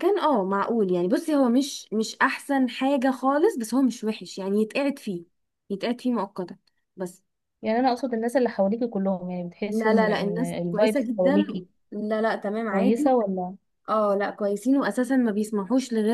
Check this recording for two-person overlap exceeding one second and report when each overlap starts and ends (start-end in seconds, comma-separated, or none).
9.7-11.4